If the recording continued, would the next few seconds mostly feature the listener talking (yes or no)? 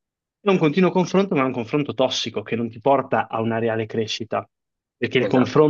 no